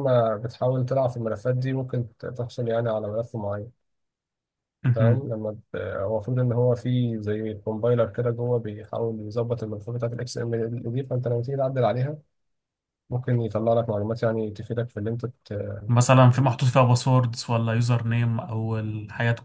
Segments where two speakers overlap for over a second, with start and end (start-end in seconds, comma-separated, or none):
none